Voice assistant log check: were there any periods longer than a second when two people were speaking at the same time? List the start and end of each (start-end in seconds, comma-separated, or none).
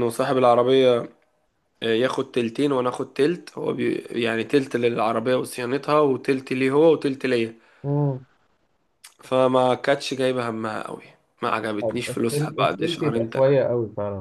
11.8-13.5